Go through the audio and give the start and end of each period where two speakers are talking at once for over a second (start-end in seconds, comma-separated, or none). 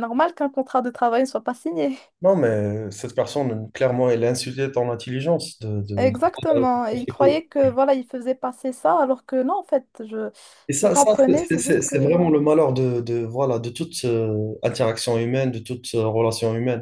10.7-12.2